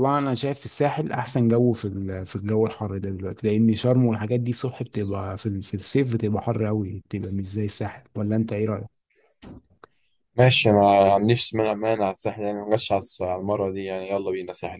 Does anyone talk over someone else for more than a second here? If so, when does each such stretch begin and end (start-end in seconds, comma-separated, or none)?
none